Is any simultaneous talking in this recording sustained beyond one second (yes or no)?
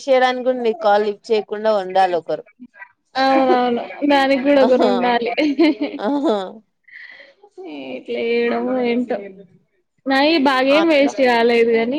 no